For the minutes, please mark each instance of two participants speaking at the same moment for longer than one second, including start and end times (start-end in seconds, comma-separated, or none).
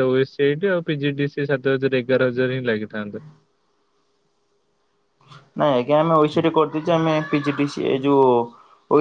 none